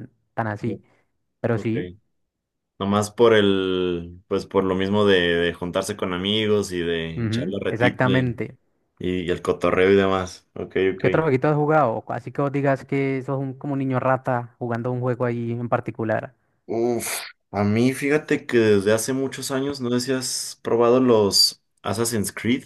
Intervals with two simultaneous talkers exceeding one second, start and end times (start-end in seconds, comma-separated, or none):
7.2-8.4